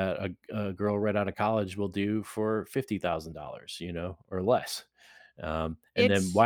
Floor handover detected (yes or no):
no